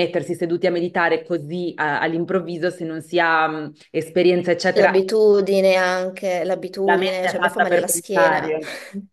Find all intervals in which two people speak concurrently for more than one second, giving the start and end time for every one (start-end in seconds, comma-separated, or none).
6.8-8.6